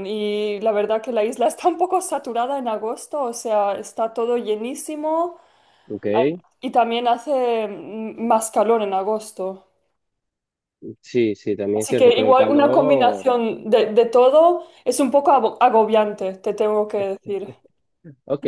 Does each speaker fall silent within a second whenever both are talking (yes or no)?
no